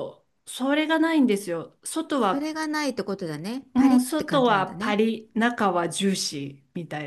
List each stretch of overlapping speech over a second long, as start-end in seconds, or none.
3.7-5.0